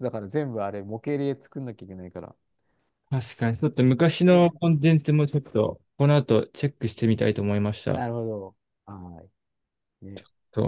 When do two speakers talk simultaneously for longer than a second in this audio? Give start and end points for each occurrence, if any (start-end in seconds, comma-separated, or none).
none